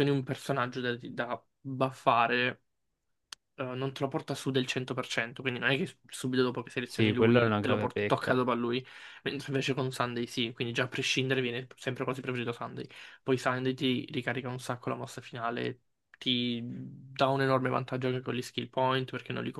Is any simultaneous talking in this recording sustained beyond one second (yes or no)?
yes